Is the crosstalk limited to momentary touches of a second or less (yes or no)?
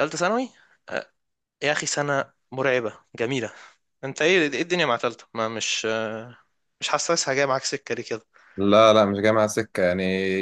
yes